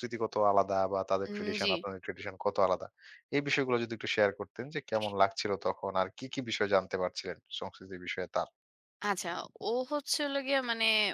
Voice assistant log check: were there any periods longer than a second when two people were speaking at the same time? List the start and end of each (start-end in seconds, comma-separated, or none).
none